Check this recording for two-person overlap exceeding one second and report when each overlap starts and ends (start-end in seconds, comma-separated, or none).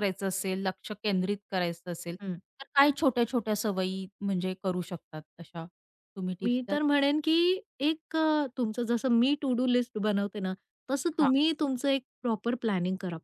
none